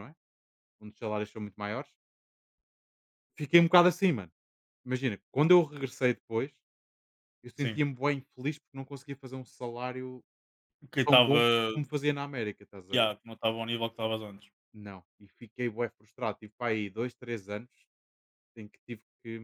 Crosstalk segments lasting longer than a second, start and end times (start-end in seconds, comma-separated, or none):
none